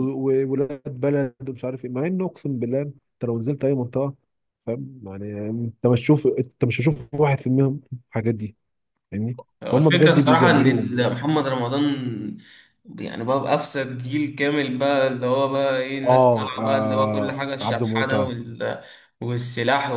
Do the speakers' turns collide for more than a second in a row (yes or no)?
yes